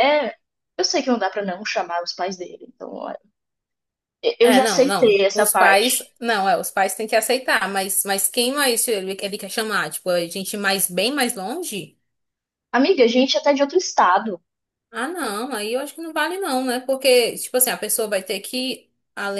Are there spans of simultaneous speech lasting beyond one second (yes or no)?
yes